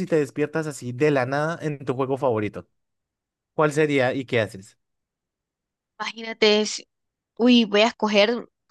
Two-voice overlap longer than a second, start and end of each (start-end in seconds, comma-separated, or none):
none